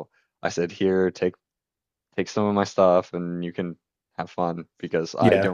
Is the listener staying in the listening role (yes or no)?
yes